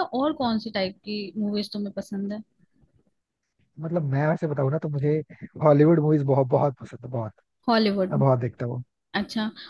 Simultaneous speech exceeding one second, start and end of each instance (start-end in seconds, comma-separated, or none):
none